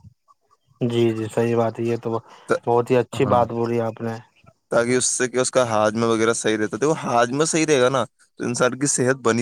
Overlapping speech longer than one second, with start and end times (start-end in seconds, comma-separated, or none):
none